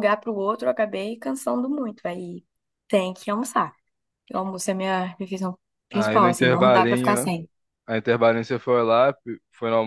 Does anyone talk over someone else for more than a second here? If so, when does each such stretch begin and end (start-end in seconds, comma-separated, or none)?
5.9-7.3